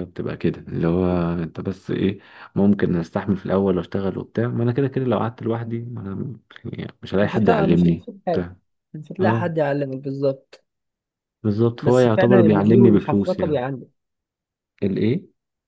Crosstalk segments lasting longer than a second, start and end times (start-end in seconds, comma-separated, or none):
7.2-8.5, 11.8-13.6